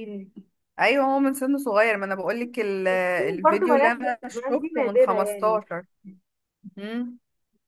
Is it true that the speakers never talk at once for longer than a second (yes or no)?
no